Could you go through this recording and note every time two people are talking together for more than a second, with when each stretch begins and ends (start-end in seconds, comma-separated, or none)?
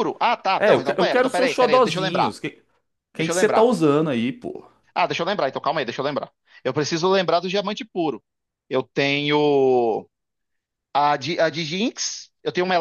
0.6-2.4